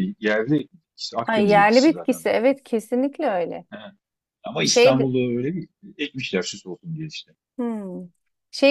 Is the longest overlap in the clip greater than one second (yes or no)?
yes